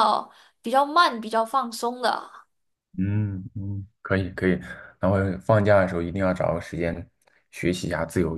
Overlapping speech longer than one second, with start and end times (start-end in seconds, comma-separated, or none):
none